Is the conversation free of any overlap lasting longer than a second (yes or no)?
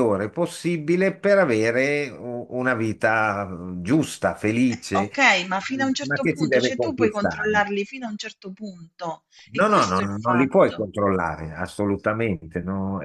no